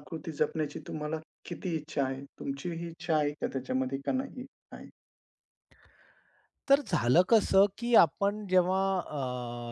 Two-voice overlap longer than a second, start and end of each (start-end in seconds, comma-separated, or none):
none